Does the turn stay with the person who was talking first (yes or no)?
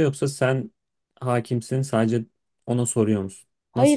no